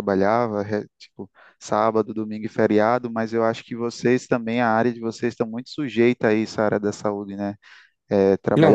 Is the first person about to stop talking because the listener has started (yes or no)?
no